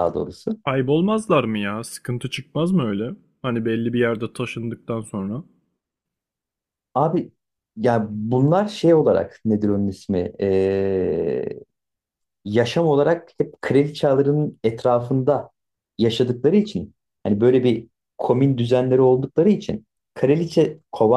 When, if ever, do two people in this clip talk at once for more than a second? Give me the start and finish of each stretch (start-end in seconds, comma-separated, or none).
none